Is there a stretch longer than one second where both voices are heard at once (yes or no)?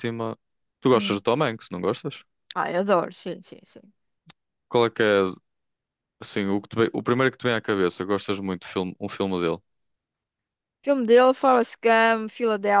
no